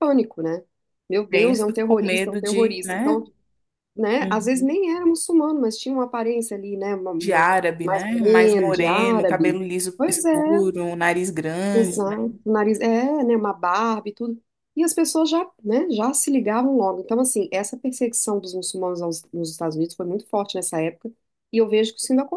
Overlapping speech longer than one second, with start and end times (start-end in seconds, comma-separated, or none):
1.3-3.1, 7.2-10.6